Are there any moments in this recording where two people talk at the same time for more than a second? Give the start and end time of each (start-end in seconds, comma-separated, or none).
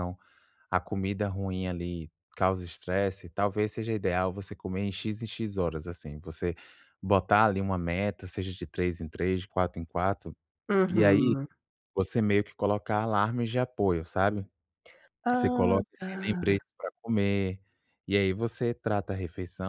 15.3-16.6